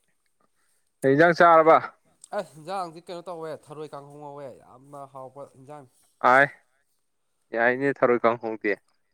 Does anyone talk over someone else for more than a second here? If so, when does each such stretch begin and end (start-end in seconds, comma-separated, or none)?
none